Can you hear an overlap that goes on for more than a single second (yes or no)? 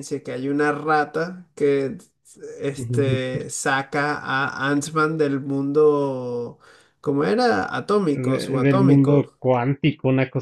yes